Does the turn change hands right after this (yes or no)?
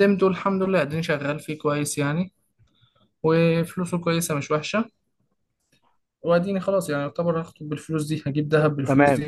yes